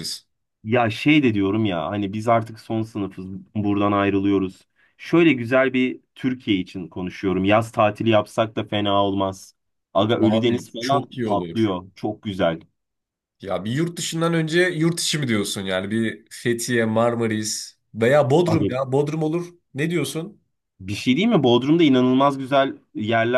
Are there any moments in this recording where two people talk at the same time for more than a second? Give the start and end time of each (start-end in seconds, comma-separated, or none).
10.2-11.7